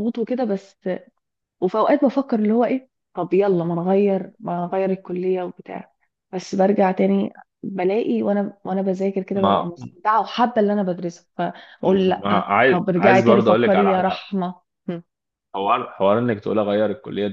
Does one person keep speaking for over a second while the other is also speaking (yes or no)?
yes